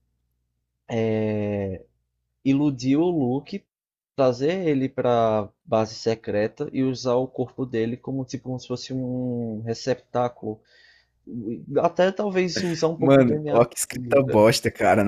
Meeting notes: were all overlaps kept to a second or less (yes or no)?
no